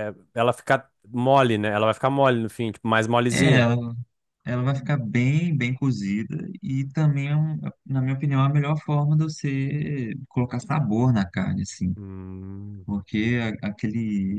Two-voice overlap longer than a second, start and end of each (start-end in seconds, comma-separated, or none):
none